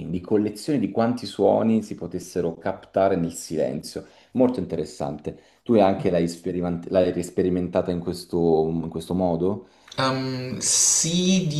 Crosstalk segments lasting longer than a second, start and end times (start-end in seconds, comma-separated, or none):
none